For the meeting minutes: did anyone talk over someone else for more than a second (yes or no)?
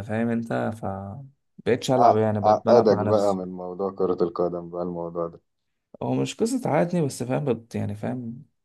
yes